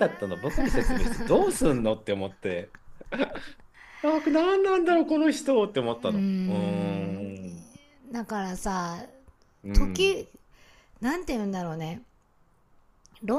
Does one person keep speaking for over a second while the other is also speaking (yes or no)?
yes